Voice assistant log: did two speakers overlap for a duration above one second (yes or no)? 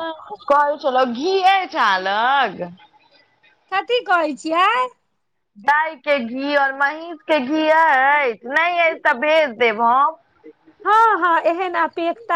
no